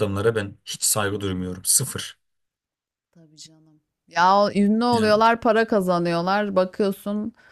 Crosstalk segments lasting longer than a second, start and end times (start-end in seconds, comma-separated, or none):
none